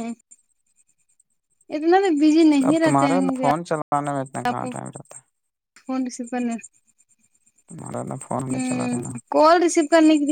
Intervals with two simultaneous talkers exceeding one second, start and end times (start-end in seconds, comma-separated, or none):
2.7-4.6